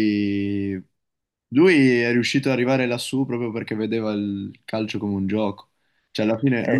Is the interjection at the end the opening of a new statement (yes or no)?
no